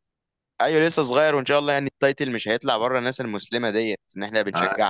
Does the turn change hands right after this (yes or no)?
yes